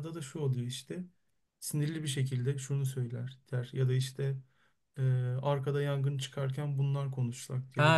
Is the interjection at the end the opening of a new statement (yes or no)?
yes